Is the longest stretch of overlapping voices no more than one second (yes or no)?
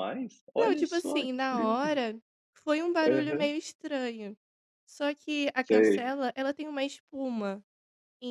no